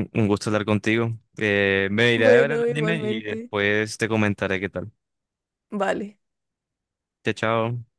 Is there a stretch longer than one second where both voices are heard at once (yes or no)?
yes